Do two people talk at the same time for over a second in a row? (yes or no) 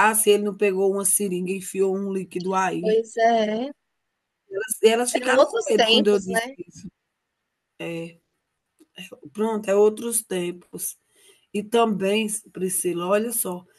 yes